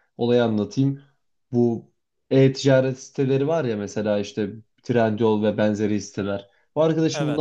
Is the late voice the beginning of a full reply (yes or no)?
no